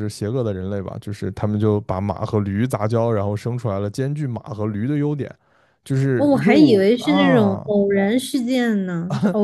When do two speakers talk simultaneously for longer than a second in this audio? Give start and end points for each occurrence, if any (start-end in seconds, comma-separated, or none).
6.2-7.7